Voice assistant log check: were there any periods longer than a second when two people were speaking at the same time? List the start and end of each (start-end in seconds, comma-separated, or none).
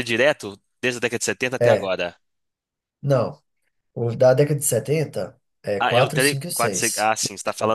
5.8-7.1